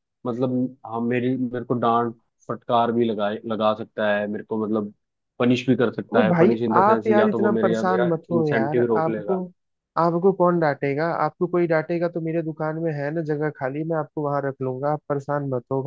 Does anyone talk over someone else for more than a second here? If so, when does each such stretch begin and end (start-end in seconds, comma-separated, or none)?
6.1-9.4